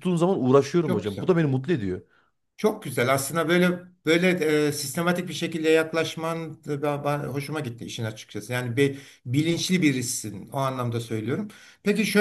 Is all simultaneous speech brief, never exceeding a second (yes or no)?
yes